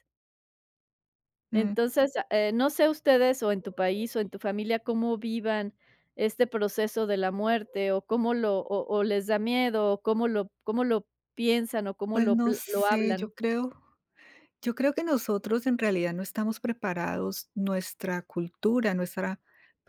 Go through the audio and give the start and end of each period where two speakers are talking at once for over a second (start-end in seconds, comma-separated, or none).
12.1-13.3